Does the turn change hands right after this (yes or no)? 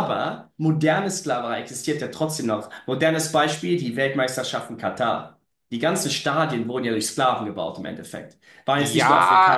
yes